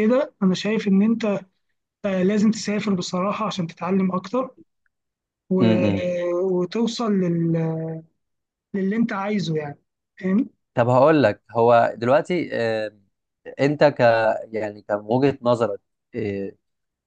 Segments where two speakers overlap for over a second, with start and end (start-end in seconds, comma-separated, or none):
none